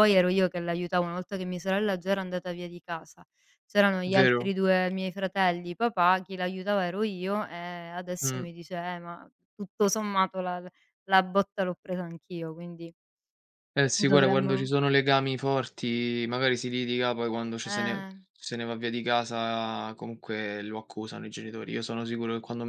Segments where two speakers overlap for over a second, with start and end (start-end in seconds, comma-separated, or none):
none